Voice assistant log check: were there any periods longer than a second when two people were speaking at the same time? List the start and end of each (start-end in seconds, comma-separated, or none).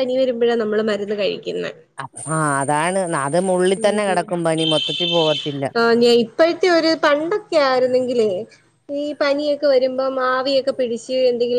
none